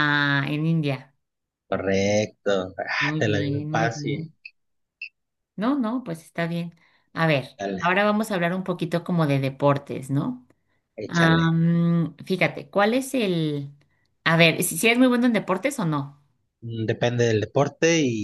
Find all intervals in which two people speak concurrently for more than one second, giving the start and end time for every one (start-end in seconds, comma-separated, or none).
3.0-4.3